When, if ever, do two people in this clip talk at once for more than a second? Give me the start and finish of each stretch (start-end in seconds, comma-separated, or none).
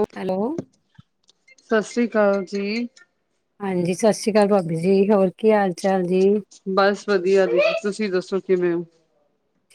none